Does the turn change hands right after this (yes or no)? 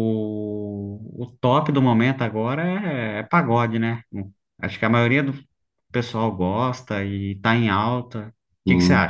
yes